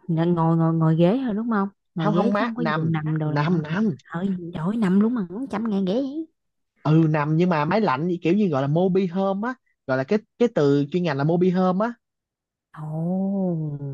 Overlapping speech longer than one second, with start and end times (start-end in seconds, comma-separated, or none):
2.0-3.6